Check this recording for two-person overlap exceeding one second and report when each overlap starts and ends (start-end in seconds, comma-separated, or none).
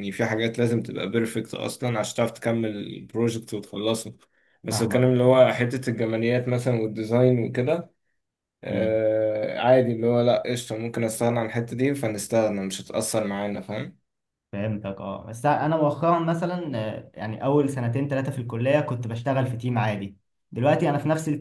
none